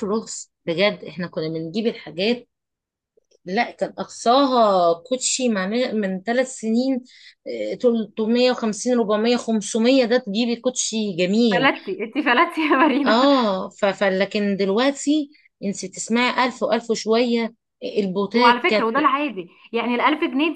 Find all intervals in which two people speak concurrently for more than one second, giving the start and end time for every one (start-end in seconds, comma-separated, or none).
none